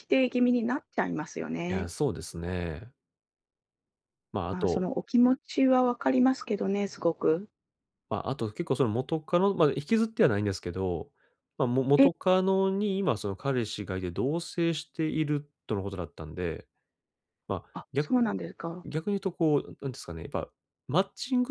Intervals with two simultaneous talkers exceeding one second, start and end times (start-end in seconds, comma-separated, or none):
none